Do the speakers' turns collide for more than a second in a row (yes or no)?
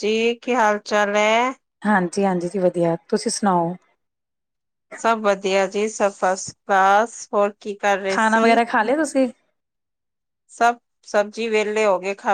no